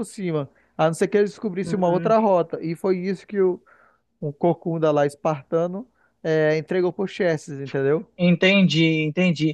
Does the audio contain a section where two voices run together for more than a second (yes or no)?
no